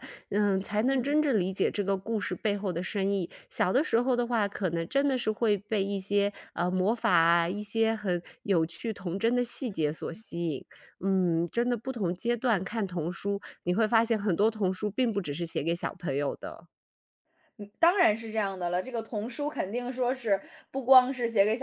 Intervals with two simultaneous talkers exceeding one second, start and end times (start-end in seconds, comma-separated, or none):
none